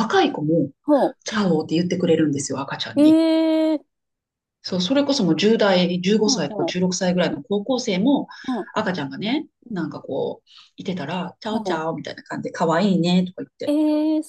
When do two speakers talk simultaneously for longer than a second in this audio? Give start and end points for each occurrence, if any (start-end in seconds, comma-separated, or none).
none